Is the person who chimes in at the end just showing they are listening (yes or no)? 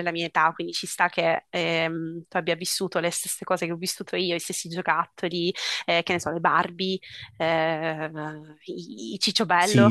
no